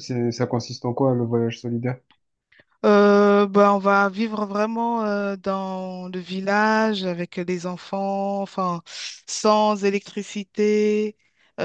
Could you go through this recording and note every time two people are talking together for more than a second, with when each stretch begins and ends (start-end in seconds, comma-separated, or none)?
none